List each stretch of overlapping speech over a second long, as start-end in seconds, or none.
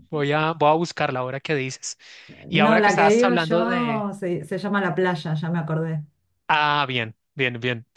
2.5-4.1